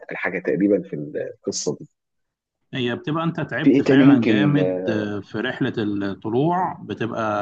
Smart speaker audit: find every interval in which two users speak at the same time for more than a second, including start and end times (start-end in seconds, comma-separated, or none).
3.6-5.1